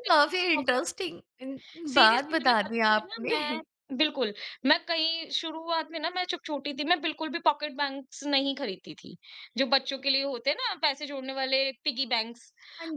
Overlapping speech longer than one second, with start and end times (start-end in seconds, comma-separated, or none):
1.9-3.6